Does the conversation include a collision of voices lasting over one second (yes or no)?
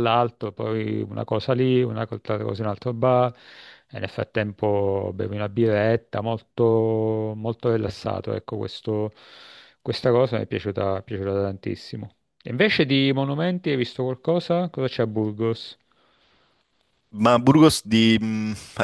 no